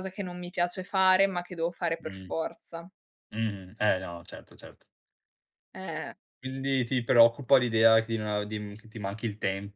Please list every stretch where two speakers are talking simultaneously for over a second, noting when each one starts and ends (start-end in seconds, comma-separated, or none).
none